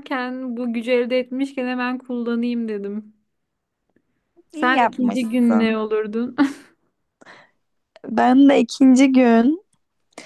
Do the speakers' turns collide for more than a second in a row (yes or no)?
yes